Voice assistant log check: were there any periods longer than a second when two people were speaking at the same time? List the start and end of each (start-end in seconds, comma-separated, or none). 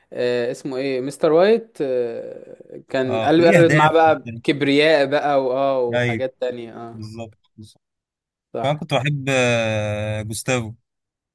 3.0-4.4